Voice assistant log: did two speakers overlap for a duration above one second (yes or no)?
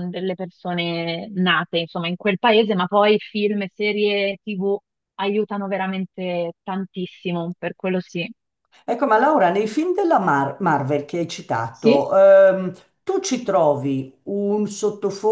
no